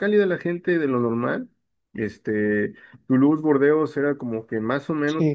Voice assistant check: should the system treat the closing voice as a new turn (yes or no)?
yes